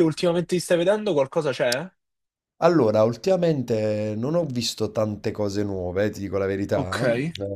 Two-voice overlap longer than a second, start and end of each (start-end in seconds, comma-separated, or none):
none